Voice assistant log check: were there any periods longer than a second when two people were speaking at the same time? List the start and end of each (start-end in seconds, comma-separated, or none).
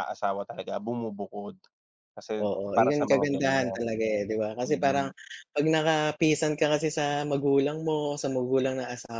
2.4-3.8